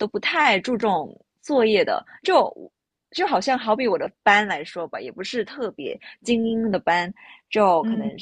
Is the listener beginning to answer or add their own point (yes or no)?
no